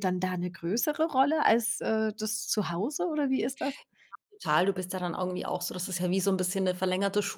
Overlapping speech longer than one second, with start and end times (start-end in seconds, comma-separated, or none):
none